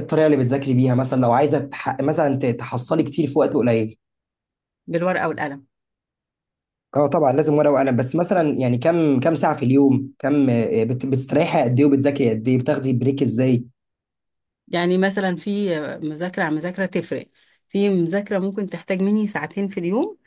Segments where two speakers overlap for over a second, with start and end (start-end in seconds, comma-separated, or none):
none